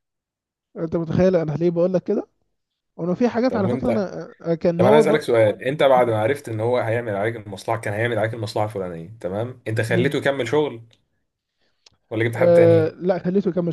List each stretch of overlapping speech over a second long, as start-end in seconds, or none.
none